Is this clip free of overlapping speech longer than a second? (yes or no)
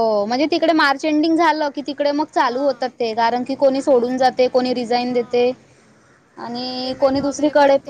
no